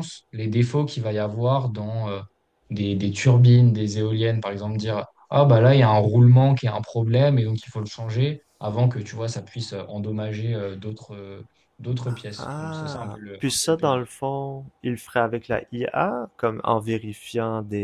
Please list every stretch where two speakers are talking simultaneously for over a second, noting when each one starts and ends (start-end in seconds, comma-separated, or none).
12.4-13.9